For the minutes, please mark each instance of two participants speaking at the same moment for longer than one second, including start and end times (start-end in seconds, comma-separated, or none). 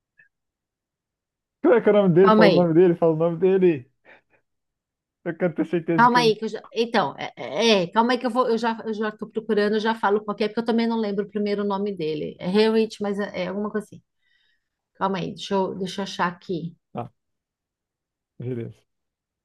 none